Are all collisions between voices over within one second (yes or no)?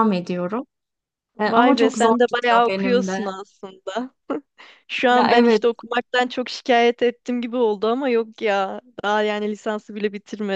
no